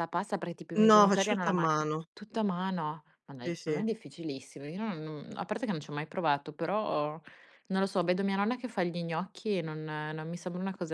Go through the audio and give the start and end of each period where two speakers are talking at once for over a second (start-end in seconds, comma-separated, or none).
0.7-2.1